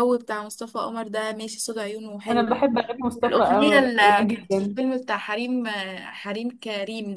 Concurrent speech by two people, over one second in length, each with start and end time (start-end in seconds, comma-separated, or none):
3.3-4.8